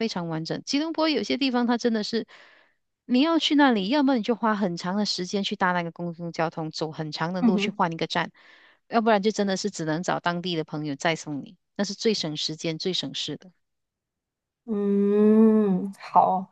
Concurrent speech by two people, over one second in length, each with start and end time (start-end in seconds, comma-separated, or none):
none